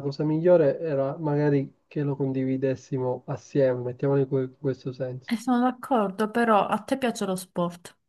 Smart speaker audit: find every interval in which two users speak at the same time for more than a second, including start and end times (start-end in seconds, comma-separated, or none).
none